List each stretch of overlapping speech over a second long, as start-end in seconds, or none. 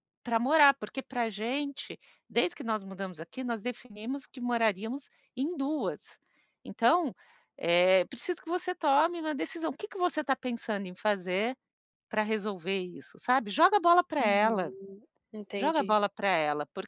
none